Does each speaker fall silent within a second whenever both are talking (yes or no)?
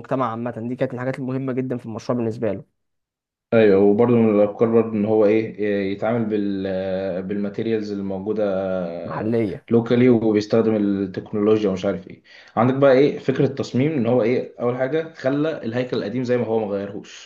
yes